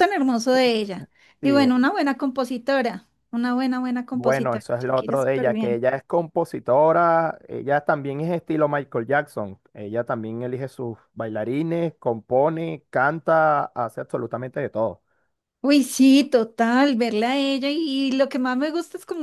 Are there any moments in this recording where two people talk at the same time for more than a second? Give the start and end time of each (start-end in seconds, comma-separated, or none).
4.1-5.8